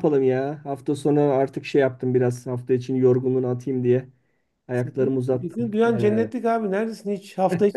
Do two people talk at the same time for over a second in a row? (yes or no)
yes